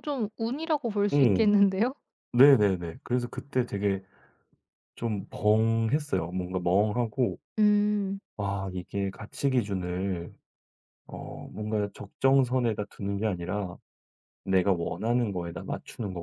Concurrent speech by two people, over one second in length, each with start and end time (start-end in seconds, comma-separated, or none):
none